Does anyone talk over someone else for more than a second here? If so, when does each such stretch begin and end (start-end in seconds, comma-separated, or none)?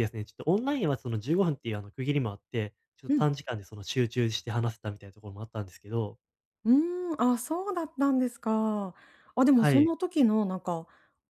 none